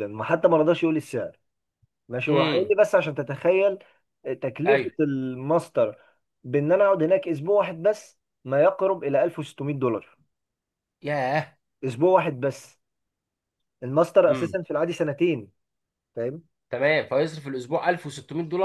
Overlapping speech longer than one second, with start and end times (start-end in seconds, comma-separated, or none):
none